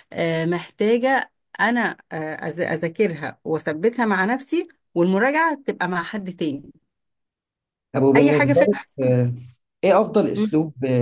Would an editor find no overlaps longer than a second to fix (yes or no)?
yes